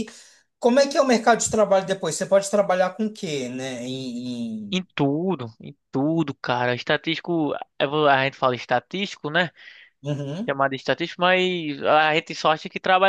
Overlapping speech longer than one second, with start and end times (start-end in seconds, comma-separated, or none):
none